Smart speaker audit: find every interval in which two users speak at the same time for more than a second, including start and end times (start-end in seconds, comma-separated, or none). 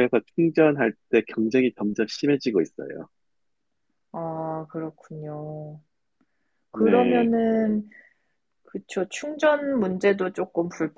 none